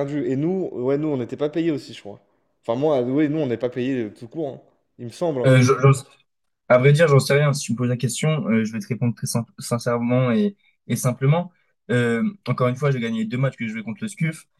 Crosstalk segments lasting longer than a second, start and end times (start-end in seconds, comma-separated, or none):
none